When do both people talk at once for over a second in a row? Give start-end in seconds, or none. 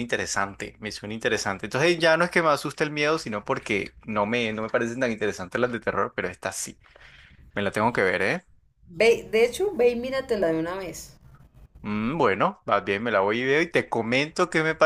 none